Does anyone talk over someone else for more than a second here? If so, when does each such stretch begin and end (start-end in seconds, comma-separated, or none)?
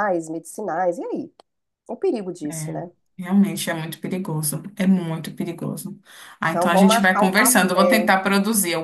6.5-8.1